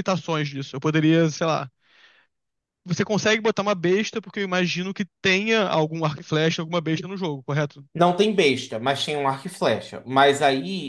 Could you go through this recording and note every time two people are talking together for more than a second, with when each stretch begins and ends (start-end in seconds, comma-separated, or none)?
none